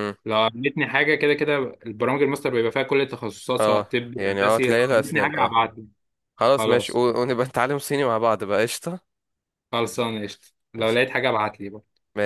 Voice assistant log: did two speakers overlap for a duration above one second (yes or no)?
yes